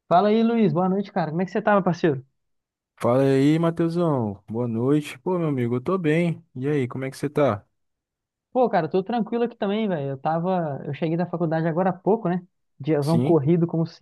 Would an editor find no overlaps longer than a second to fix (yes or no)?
yes